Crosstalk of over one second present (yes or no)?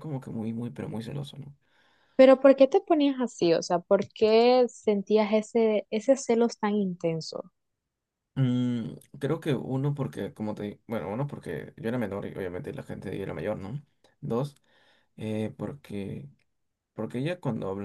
no